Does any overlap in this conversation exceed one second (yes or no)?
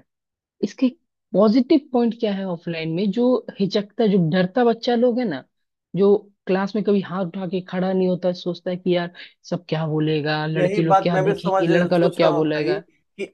yes